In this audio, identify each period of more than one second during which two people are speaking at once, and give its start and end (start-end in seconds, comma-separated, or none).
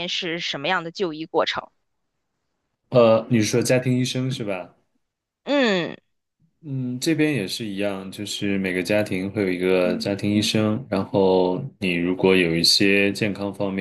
none